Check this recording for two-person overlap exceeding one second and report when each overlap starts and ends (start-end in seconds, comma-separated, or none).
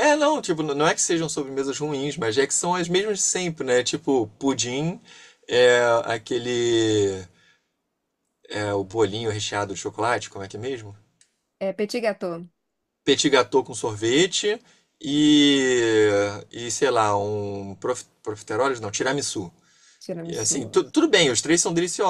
none